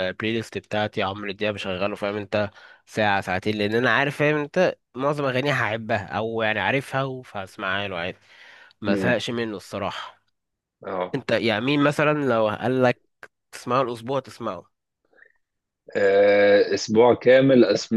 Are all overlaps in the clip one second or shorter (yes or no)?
yes